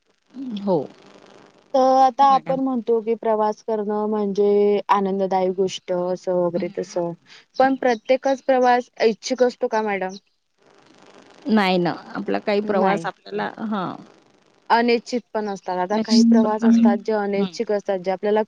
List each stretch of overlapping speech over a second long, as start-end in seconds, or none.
15.9-17.5